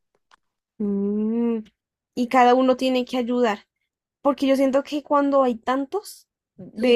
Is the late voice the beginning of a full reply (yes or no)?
no